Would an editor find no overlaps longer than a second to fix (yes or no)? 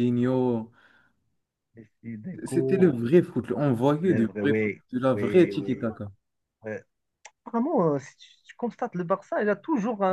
no